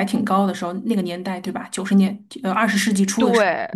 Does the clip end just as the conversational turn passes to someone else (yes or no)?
yes